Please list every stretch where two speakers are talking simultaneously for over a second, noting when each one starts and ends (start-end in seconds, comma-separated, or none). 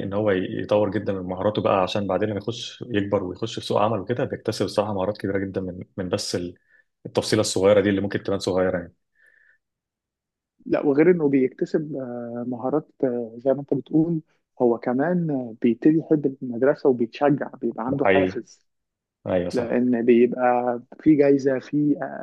none